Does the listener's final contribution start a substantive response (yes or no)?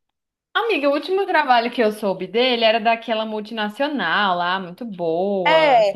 yes